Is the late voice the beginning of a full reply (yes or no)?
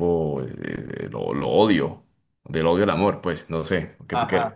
yes